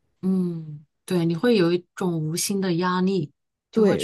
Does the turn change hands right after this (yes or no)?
yes